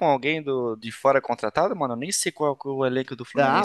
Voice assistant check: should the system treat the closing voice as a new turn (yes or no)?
yes